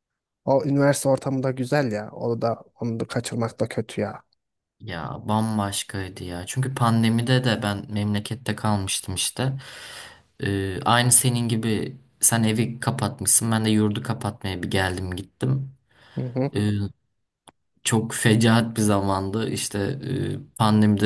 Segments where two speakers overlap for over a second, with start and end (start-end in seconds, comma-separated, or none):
none